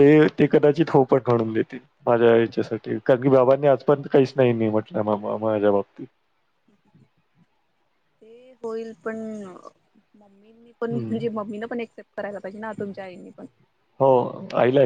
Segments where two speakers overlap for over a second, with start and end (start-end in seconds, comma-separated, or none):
none